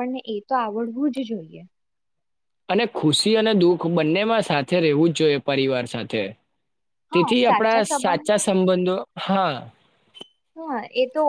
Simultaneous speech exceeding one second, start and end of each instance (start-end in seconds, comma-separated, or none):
7.1-8.6